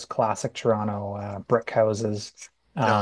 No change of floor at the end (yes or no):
yes